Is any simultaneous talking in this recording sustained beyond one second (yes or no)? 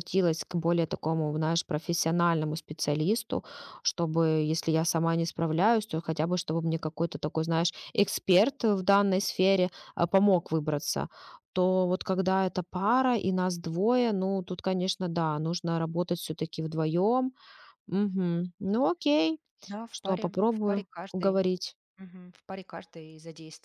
yes